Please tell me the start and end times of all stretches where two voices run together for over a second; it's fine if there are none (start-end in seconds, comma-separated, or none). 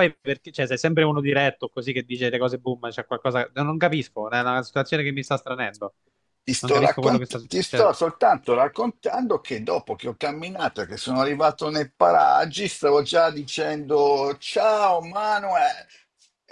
6.6-7.9